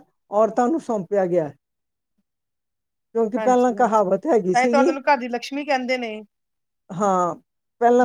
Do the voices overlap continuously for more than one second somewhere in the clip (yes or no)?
yes